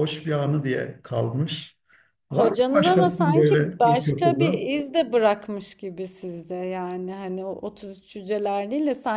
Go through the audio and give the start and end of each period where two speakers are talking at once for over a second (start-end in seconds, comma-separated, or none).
2.3-4.7